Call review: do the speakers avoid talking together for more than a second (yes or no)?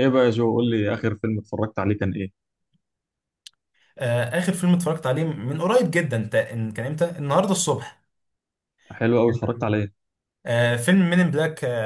yes